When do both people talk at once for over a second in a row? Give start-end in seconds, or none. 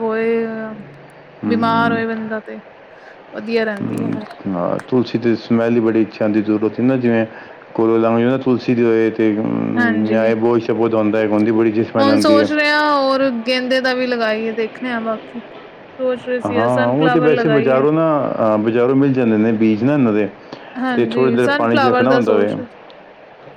20.9-22.4